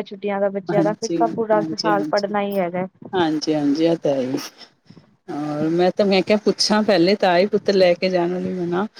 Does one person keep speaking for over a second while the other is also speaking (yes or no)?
no